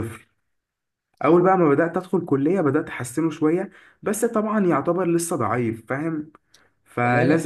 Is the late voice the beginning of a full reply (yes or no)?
no